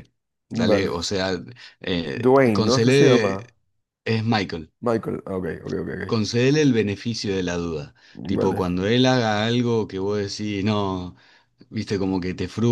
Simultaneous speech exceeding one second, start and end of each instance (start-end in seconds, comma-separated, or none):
2.2-3.4